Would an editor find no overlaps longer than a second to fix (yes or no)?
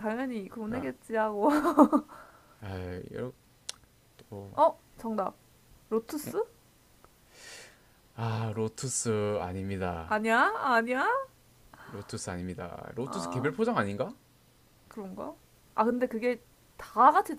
yes